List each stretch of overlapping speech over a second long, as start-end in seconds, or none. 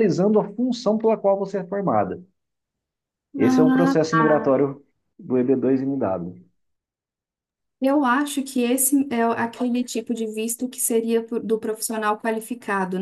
3.4-4.6